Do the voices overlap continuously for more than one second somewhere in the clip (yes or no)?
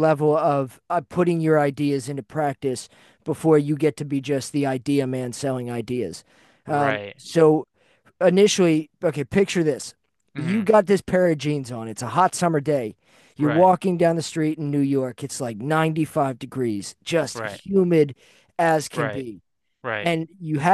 no